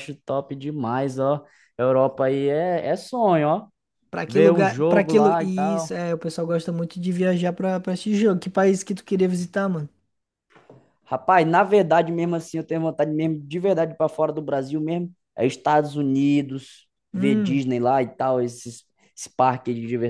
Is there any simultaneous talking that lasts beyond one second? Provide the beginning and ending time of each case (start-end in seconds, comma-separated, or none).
4.3-6.0